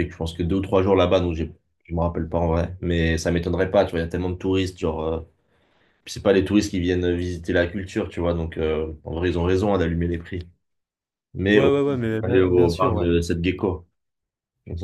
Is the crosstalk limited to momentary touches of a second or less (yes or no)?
no